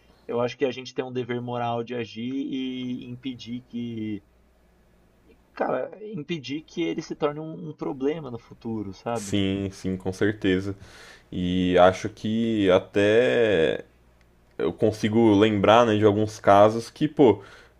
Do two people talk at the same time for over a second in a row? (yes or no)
no